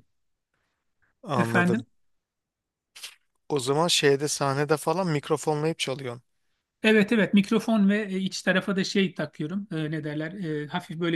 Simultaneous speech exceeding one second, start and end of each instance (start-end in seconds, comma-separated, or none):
none